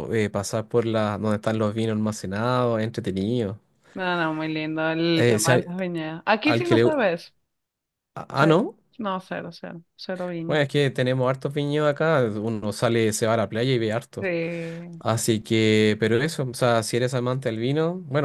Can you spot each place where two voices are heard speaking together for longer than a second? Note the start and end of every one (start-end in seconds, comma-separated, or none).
none